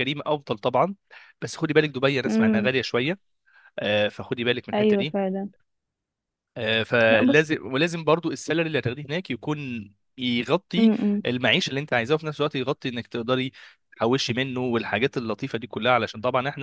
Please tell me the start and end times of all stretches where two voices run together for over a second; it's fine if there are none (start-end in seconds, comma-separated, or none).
none